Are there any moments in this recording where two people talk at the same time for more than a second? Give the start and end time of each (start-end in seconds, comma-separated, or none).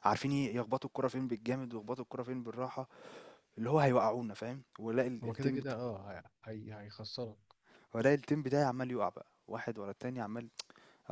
none